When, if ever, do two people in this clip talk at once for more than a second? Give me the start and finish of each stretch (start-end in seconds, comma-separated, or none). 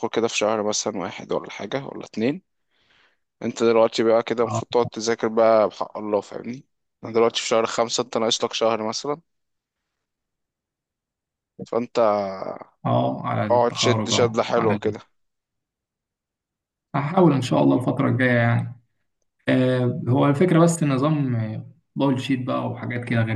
13.5-14.9